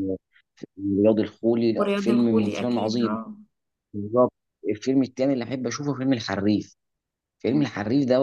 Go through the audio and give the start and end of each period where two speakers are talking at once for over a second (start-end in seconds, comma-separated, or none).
1.8-3.2